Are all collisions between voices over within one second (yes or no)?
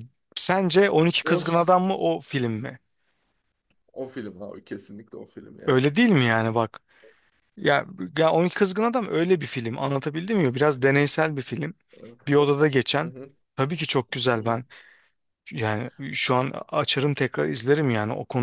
yes